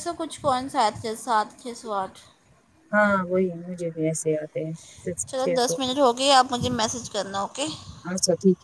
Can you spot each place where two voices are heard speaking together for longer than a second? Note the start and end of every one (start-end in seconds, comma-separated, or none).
none